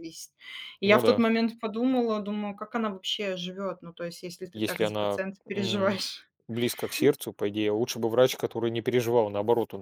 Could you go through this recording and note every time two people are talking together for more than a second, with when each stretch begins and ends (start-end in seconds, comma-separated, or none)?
4.5-6.0